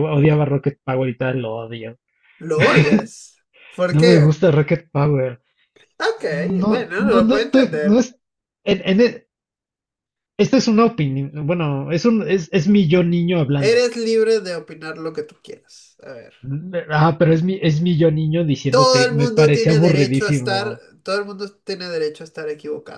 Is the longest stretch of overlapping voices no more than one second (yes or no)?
no